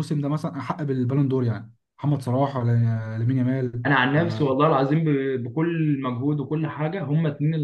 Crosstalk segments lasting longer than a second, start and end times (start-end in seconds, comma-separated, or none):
none